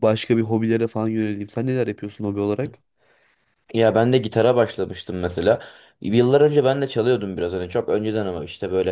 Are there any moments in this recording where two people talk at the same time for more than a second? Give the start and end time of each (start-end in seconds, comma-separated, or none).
none